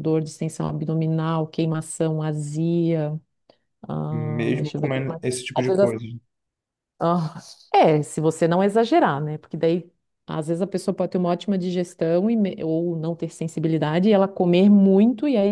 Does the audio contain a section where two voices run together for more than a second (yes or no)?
yes